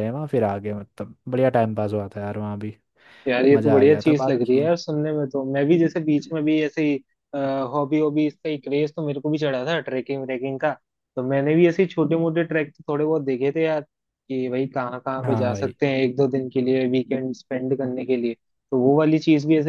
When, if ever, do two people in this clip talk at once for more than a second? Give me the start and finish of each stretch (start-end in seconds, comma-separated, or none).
3.5-4.7